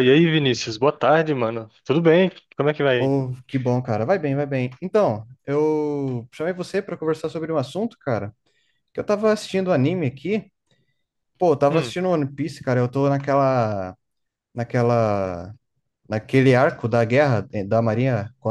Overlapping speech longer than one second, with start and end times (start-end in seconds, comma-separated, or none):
none